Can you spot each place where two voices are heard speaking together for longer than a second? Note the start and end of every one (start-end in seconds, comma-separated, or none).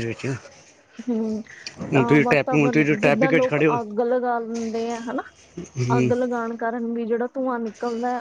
1.9-3.5